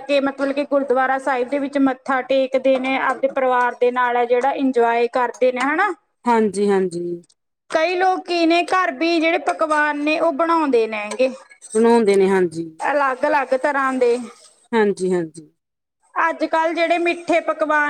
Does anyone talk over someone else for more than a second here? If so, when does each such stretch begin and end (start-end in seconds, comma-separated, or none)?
none